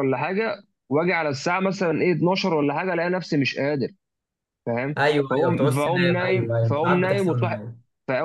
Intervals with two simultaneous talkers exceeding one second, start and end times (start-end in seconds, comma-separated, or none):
5.0-7.6